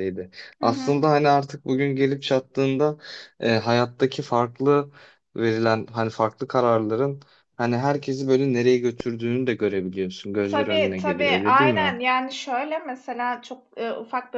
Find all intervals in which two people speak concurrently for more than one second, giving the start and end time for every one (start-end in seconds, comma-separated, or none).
10.4-12.0